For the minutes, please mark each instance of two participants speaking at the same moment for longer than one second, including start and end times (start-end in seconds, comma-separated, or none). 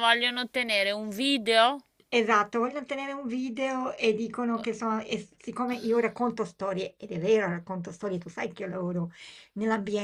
none